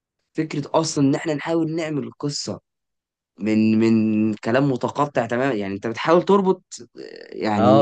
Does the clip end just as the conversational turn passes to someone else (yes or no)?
yes